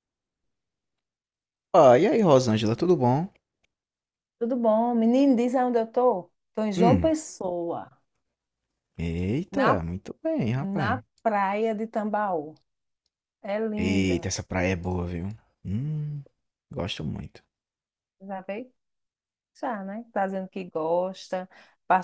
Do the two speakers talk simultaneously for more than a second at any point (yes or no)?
no